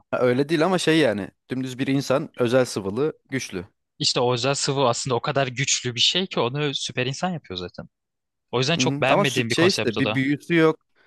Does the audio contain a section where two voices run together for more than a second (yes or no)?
yes